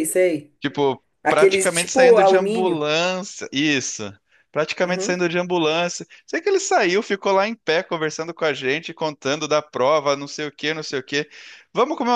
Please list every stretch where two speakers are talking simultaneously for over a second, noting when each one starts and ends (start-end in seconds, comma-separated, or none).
1.2-2.8